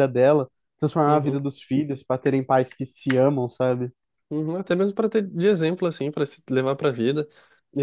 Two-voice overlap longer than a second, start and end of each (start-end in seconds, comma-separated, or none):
none